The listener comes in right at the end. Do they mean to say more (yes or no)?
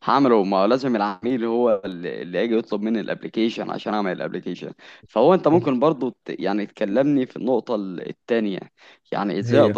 no